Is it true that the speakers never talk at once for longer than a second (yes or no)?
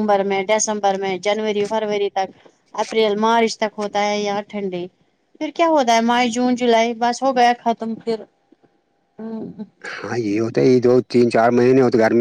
yes